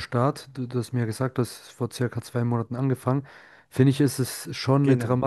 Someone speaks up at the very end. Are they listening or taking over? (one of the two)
listening